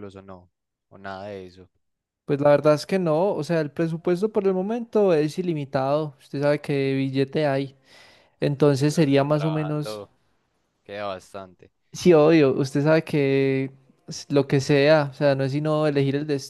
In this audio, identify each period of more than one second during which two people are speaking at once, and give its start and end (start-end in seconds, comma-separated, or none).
8.6-10.0